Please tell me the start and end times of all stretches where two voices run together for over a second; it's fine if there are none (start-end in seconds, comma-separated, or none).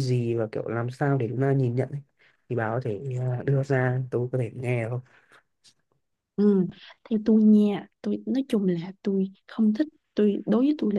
none